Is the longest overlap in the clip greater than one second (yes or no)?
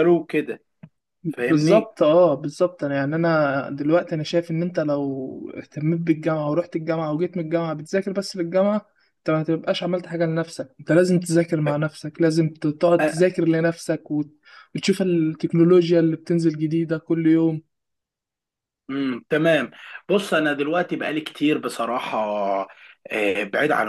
no